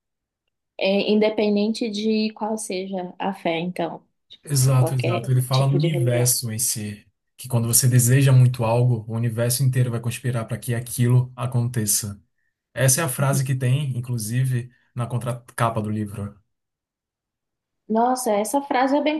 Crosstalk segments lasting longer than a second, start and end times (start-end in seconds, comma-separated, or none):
4.8-6.3